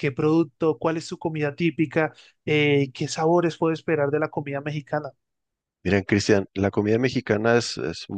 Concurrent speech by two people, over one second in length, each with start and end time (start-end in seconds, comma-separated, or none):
none